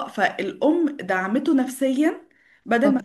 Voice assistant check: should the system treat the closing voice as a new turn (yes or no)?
no